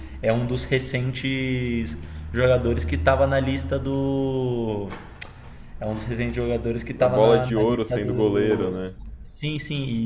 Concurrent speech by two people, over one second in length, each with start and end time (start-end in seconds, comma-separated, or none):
7.0-8.7